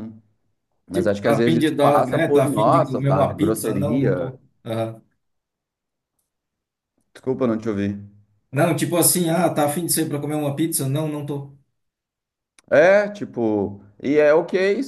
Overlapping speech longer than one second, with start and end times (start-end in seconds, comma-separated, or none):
0.9-4.3